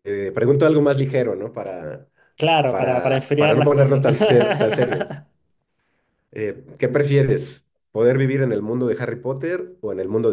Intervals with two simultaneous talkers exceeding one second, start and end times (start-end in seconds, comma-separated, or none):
2.7-4.0